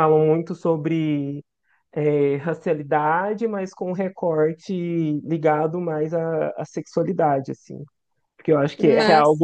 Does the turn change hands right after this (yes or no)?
no